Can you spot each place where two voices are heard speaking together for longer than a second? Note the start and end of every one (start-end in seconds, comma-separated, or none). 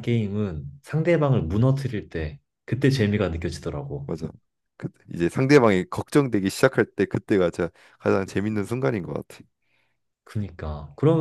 none